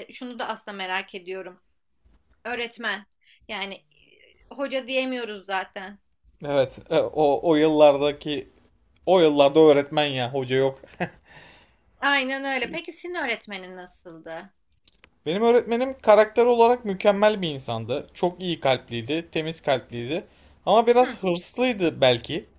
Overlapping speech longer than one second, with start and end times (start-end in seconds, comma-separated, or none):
none